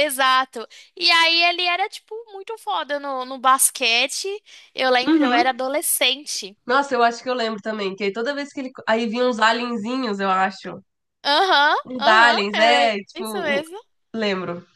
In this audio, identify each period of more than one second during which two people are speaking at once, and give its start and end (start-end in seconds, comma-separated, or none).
11.8-13.6